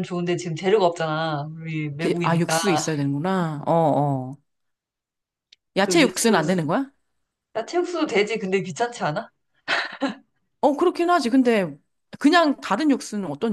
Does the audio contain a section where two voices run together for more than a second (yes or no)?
no